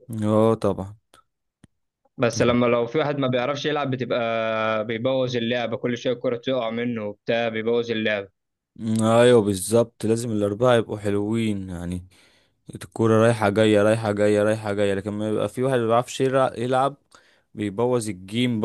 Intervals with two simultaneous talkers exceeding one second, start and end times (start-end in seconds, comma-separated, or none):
none